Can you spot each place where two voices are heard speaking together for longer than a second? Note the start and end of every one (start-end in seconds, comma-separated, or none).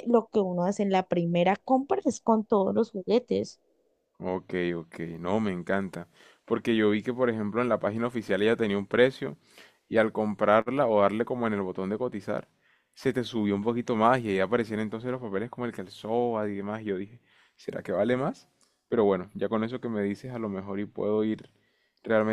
none